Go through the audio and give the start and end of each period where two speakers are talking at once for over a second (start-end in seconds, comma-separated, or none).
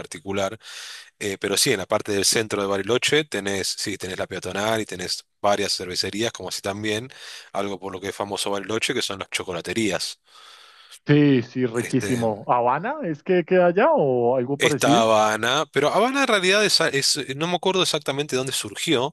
none